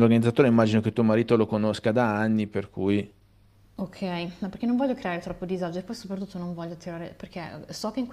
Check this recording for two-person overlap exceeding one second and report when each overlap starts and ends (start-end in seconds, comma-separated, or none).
none